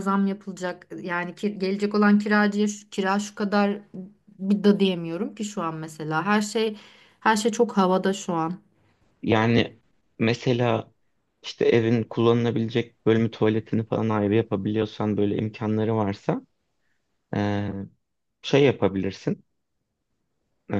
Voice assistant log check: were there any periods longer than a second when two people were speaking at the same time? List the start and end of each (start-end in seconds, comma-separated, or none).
none